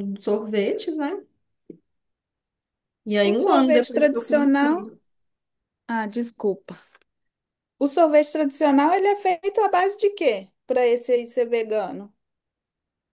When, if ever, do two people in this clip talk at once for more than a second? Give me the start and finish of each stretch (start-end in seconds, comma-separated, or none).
3.2-4.9